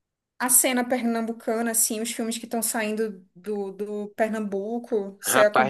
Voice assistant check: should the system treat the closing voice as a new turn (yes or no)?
yes